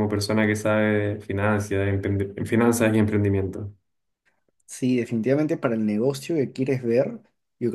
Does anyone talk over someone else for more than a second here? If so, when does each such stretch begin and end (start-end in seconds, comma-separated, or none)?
none